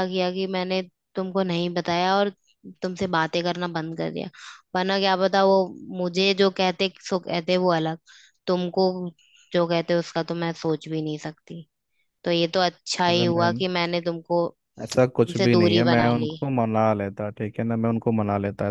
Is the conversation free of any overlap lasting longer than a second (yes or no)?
no